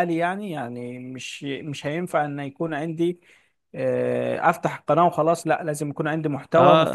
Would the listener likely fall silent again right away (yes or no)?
no